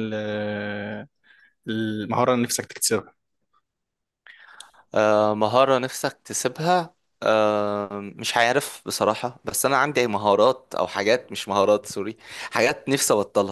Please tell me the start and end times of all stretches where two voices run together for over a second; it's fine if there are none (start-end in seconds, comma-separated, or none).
none